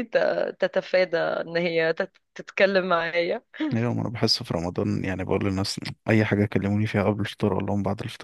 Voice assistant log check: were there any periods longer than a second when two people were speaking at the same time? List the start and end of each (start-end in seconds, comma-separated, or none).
none